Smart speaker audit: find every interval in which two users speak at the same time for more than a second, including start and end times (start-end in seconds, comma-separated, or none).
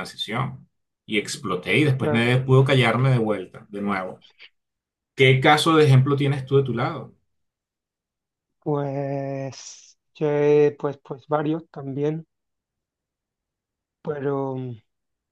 none